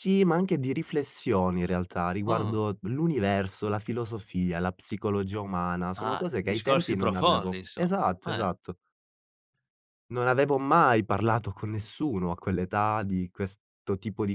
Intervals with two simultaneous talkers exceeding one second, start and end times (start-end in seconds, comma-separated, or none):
6.0-8.5